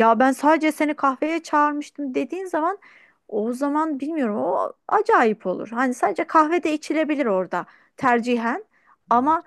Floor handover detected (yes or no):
no